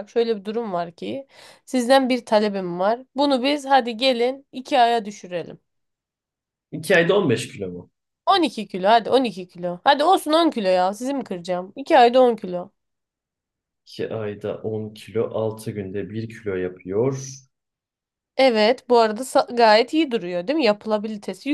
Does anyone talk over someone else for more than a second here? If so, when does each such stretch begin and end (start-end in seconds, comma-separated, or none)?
none